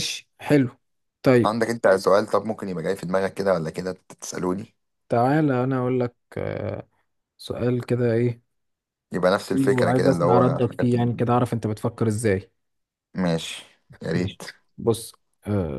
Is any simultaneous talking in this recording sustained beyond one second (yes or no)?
yes